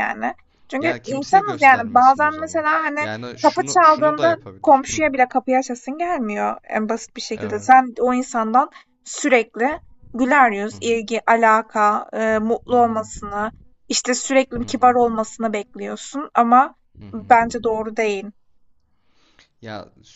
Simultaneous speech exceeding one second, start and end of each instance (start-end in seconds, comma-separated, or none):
0.8-5.0